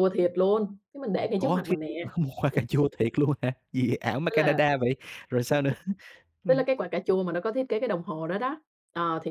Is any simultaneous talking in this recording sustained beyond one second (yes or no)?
no